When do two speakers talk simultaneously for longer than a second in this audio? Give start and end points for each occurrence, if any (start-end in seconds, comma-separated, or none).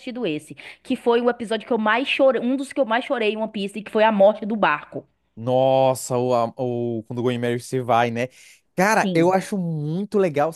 none